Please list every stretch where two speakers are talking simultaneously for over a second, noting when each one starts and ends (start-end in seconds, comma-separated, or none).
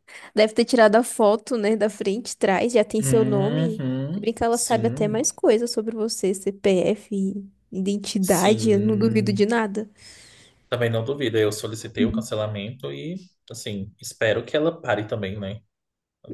3.0-5.2, 8.2-9.5